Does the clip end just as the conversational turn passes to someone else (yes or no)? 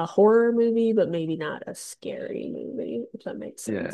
yes